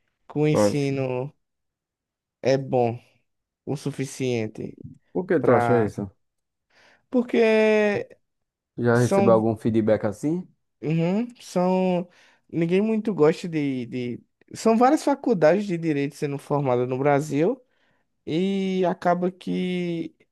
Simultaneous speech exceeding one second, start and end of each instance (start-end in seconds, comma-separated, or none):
none